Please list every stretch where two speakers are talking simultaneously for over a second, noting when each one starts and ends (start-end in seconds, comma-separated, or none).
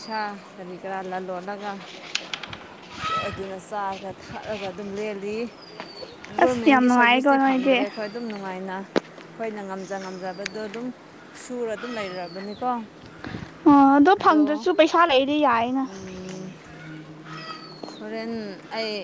6.4-7.8